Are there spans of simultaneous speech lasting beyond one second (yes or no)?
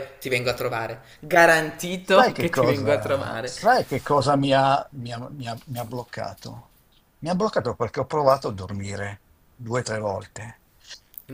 yes